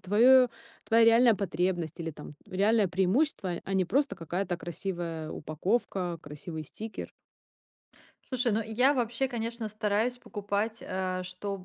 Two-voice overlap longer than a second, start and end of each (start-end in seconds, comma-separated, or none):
none